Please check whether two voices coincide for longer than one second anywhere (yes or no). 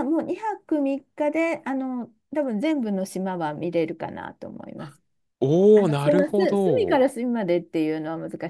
yes